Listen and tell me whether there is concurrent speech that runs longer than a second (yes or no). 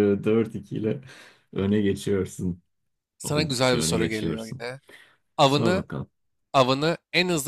yes